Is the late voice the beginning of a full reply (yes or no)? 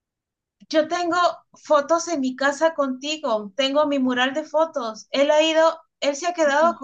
no